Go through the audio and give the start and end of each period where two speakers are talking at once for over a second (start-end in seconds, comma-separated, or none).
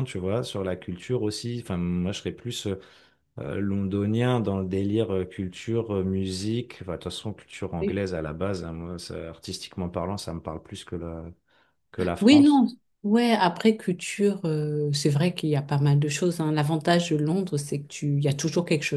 none